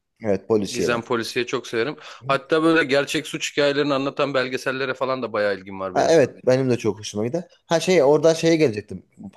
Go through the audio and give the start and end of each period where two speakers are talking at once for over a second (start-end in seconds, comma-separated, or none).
none